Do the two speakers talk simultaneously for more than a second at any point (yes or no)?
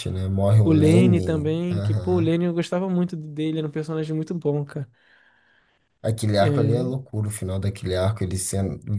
yes